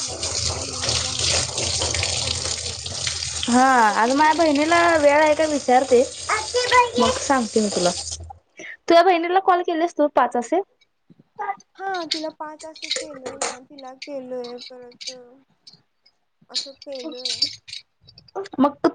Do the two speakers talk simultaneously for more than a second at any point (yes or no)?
no